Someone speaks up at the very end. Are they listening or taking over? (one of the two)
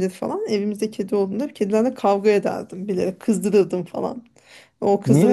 taking over